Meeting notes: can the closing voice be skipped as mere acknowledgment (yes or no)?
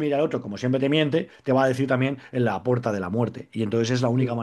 yes